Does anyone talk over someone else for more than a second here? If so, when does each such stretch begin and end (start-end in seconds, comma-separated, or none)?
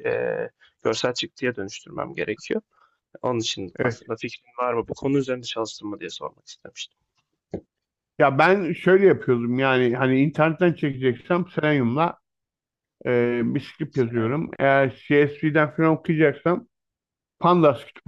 none